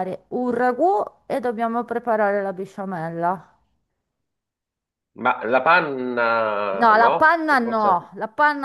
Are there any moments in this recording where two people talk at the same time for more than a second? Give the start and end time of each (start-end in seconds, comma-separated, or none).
6.7-8.1